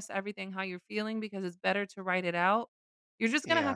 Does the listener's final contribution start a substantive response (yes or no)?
no